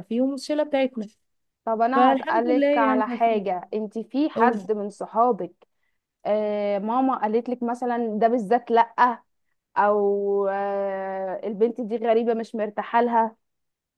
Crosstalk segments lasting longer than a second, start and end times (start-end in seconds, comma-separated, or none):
1.9-3.4